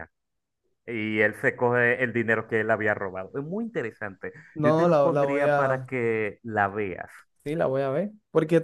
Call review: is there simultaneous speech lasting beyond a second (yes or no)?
yes